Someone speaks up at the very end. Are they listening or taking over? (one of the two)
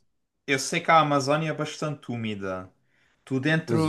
listening